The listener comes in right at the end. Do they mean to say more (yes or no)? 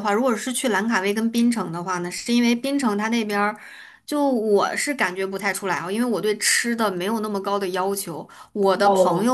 no